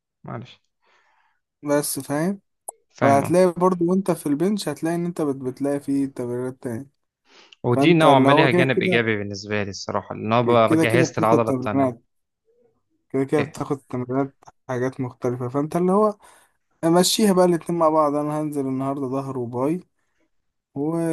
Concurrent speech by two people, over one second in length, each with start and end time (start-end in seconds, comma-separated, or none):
7.7-9.0, 10.7-12.0